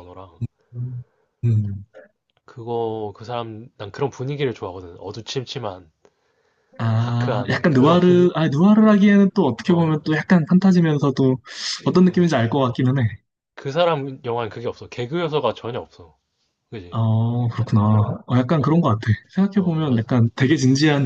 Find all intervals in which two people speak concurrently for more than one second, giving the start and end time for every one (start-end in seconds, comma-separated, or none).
7.0-8.3